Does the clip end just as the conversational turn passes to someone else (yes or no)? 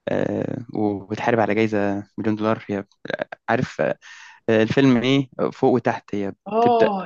yes